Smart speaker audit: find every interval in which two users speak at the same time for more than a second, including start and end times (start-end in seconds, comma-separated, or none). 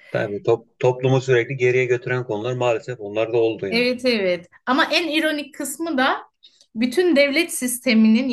none